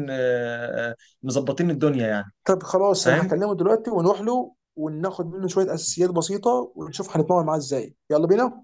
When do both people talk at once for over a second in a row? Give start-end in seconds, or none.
none